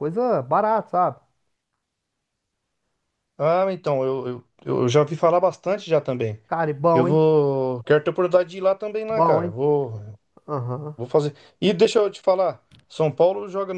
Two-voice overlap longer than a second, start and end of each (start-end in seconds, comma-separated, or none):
none